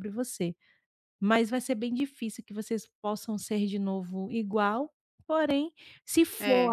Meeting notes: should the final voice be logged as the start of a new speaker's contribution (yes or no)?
no